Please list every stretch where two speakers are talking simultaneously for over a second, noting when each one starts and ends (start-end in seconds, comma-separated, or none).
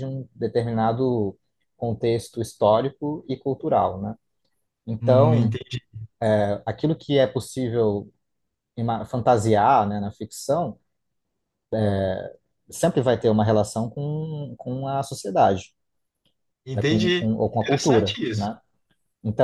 16.7-18.5